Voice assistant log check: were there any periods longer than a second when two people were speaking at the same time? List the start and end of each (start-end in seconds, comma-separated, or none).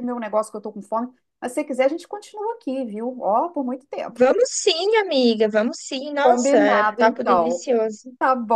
6.2-7.7